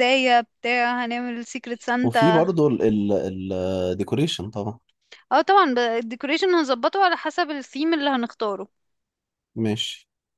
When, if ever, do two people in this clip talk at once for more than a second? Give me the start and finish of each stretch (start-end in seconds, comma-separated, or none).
none